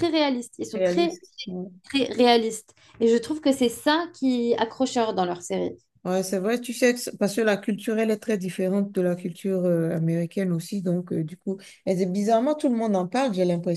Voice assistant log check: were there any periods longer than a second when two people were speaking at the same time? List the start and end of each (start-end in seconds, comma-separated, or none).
none